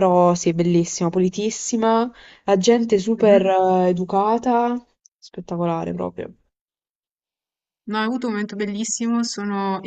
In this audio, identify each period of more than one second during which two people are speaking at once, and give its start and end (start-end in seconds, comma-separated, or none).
none